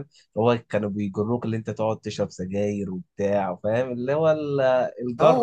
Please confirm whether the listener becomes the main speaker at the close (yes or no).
yes